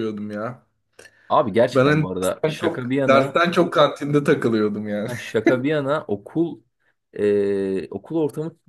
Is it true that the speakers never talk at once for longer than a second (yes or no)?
no